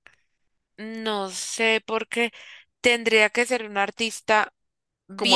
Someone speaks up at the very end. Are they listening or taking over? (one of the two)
taking over